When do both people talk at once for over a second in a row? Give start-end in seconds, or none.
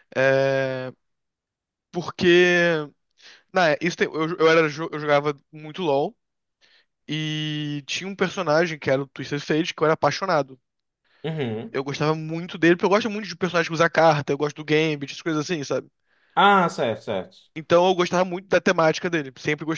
none